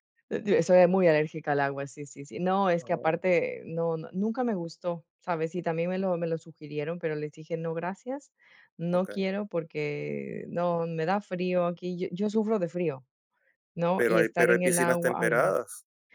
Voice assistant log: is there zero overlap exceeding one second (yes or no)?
no